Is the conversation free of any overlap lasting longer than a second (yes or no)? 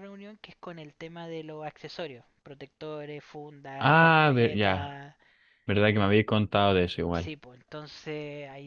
no